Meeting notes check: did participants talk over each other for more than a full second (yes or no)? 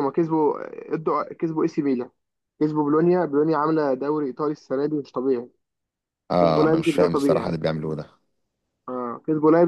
yes